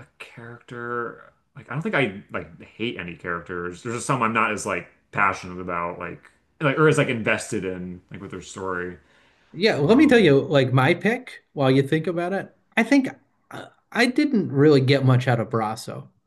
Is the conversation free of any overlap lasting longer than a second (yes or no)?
yes